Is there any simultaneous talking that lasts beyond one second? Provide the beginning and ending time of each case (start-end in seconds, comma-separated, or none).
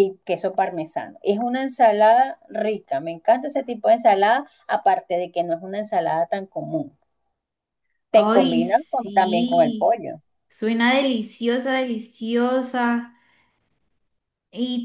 8.1-10.0